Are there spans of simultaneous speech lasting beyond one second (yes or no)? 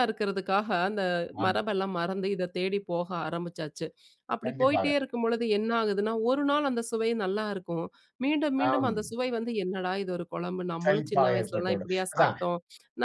yes